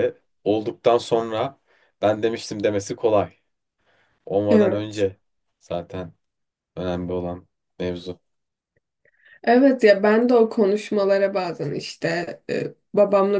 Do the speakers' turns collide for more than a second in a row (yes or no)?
no